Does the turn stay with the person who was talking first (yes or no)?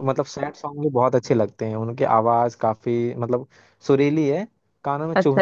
no